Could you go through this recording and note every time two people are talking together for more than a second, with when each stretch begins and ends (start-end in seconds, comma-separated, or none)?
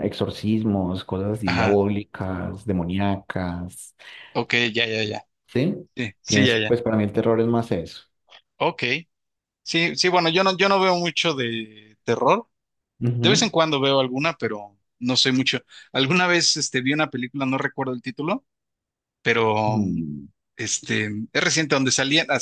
none